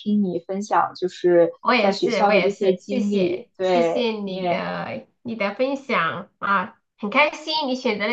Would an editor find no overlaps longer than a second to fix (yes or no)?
no